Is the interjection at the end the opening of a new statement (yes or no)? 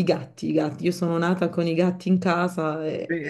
yes